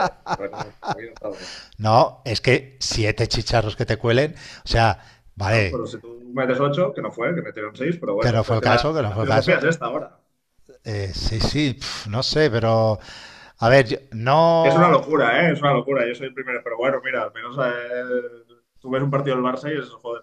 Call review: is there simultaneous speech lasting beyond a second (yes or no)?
yes